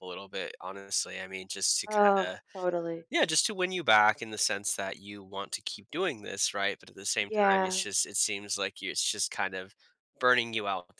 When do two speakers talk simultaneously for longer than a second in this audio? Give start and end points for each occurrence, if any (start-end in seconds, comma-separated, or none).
none